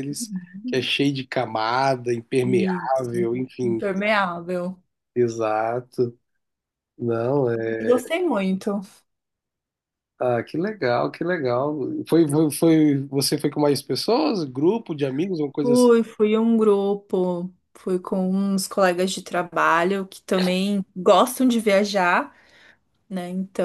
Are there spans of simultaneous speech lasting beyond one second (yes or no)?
yes